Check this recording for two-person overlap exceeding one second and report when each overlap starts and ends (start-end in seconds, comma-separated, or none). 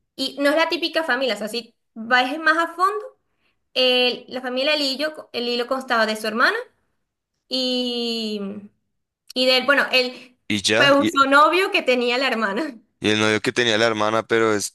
none